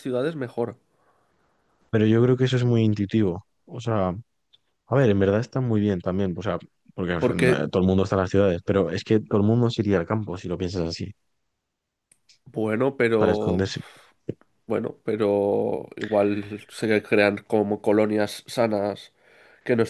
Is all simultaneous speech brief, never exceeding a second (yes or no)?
yes